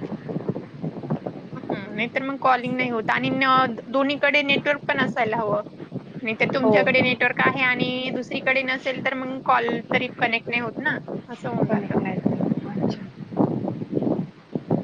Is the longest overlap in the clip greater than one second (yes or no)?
no